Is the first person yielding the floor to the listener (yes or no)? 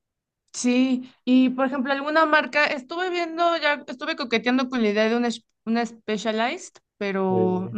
no